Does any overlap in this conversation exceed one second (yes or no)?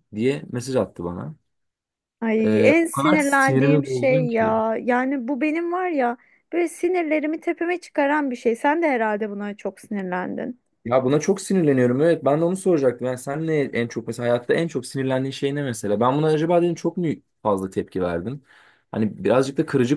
yes